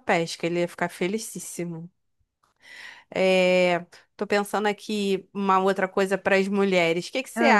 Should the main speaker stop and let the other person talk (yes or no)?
no